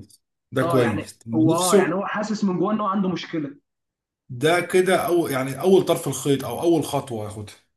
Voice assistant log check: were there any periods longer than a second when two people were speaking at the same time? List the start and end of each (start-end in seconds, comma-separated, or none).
0.6-2.0